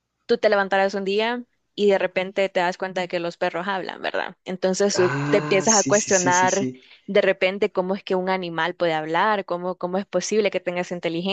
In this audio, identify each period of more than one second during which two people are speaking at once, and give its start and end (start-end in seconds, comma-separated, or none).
5.0-6.7